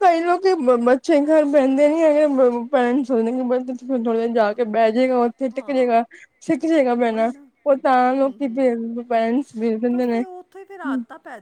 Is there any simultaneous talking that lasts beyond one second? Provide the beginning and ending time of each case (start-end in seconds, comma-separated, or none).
none